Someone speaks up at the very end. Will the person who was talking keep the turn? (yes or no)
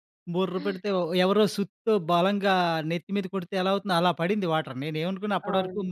yes